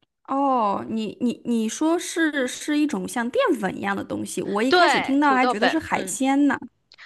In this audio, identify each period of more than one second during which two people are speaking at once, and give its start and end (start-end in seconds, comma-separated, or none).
4.7-6.2